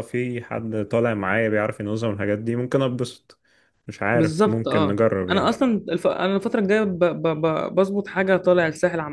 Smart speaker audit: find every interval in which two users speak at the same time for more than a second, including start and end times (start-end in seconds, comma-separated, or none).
4.1-5.5